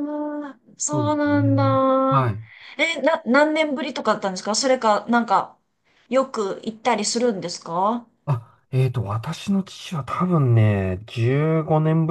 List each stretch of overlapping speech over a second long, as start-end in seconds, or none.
0.9-2.3